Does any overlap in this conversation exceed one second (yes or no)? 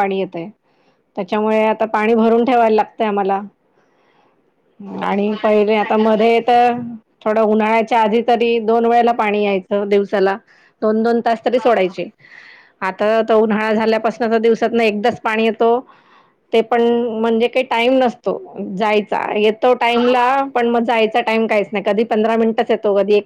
yes